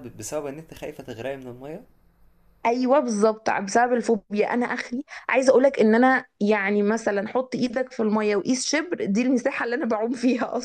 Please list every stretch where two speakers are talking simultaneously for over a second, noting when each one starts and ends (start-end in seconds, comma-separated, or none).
none